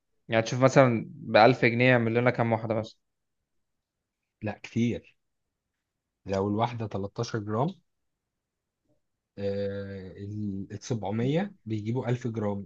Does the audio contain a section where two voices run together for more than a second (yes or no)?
no